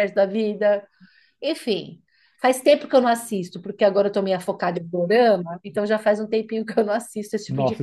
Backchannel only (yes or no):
no